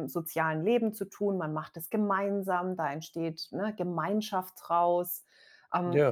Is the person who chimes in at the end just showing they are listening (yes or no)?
yes